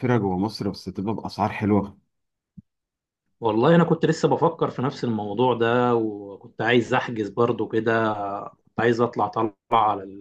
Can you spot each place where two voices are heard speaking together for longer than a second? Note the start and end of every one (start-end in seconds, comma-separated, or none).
none